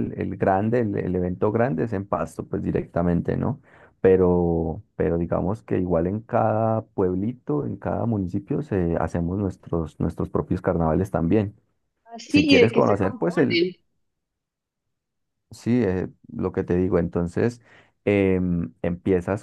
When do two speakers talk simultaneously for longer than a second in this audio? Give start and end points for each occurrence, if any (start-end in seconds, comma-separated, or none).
12.3-13.6